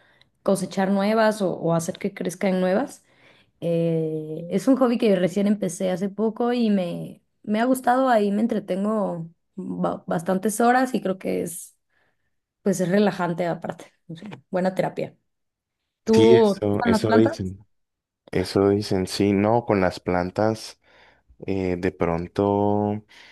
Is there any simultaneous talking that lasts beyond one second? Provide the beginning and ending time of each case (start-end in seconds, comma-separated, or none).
16.1-17.3